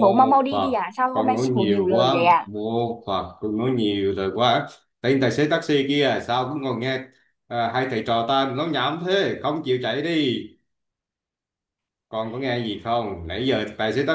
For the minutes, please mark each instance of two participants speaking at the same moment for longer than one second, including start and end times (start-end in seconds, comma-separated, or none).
0.5-2.5